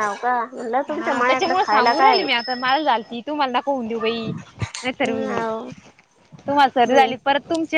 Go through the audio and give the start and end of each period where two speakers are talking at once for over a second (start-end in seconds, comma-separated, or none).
0.9-2.2